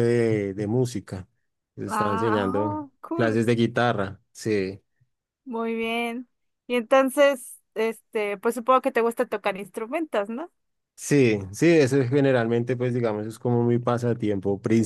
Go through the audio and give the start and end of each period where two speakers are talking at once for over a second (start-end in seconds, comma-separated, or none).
1.9-3.3